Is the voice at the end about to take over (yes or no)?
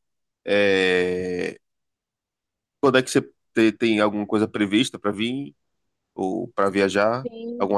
yes